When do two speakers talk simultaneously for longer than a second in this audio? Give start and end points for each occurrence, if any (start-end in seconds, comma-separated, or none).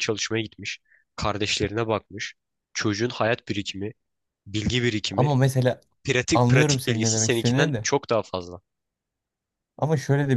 6.3-7.8